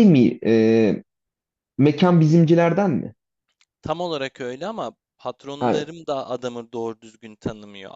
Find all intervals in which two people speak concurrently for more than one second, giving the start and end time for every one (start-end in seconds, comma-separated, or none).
none